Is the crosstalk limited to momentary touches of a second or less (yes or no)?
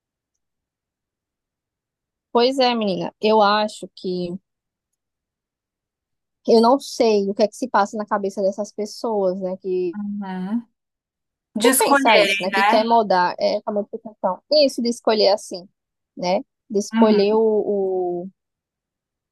no